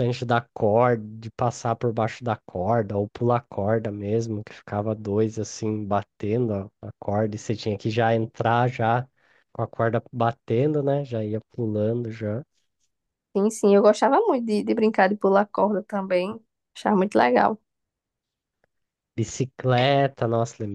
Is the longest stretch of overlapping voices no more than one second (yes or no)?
yes